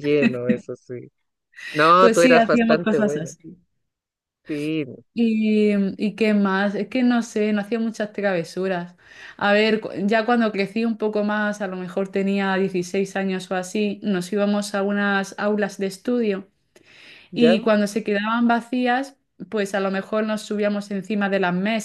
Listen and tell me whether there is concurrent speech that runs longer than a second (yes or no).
yes